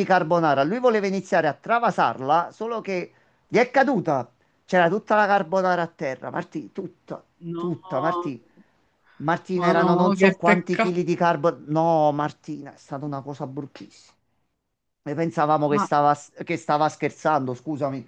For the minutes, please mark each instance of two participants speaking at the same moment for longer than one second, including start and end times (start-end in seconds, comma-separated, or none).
9.5-11.0